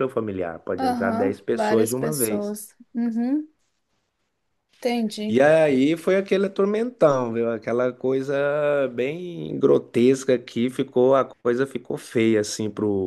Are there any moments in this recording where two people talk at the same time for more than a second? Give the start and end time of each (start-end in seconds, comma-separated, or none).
0.8-2.6